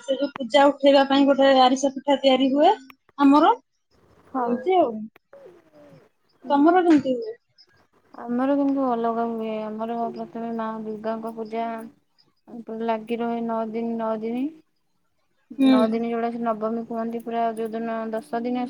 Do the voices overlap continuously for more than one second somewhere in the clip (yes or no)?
no